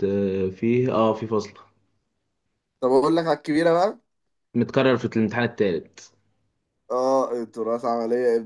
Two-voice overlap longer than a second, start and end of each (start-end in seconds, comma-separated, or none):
none